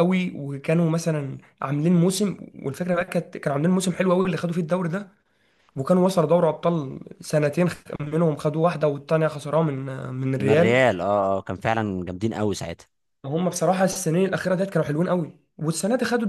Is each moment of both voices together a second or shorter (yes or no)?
yes